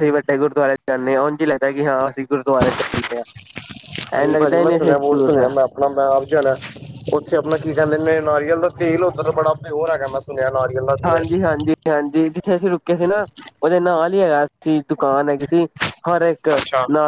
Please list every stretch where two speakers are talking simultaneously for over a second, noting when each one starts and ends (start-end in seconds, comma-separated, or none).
4.2-5.6